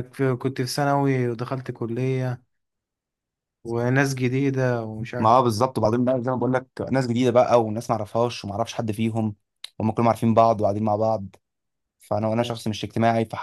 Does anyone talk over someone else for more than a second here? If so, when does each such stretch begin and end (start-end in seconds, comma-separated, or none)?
none